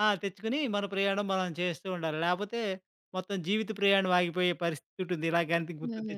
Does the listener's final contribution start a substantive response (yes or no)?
yes